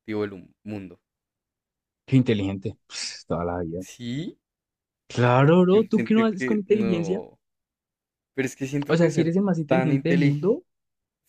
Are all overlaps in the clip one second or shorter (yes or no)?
no